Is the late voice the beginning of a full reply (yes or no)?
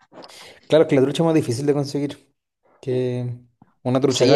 yes